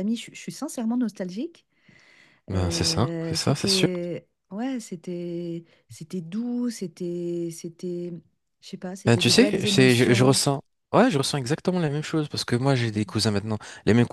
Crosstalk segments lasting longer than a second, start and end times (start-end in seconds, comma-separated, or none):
2.5-3.9, 9.1-10.4